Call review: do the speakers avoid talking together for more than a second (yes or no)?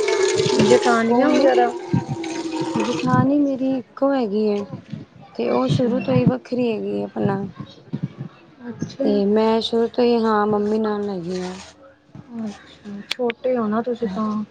yes